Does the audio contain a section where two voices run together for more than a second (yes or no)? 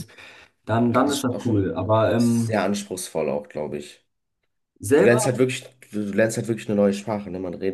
yes